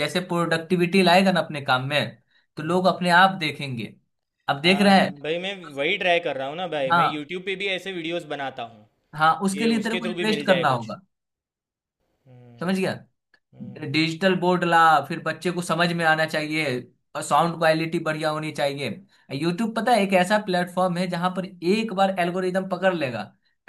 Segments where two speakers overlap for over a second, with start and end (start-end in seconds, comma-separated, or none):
9.5-10.9